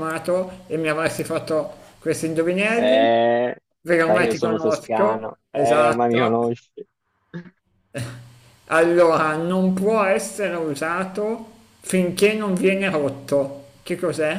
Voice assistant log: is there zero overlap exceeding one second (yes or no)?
no